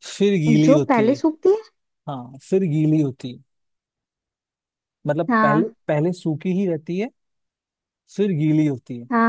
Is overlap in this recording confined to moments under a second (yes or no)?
yes